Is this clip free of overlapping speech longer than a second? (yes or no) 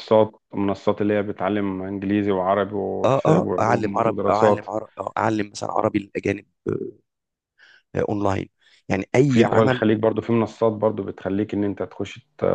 no